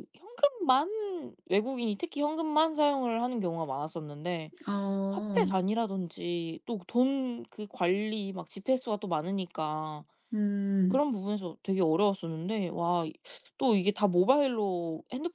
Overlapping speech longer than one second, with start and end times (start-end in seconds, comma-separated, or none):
none